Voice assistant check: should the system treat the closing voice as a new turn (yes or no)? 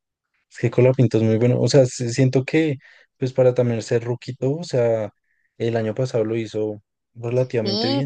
yes